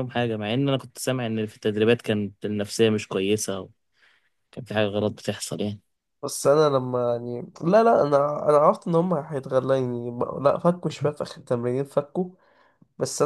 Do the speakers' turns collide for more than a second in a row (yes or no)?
no